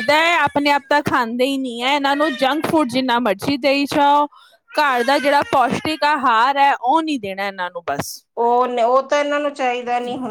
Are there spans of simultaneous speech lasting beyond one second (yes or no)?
no